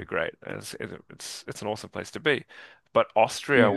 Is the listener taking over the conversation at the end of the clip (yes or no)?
no